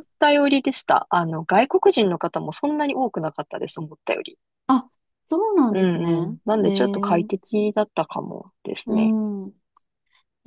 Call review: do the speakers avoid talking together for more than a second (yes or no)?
no